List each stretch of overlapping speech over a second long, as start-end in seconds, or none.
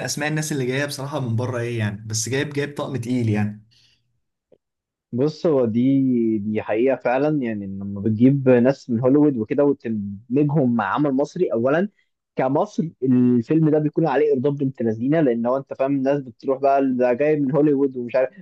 none